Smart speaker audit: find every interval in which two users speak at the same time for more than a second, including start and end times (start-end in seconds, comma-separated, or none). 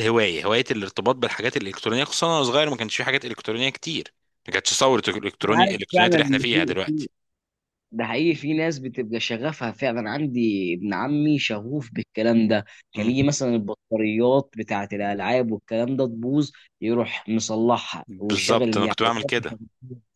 5.4-6.7, 18.1-19.6